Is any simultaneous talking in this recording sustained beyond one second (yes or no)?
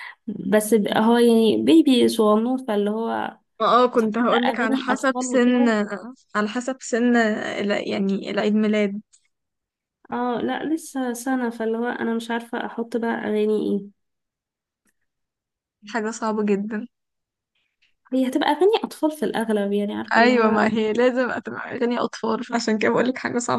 yes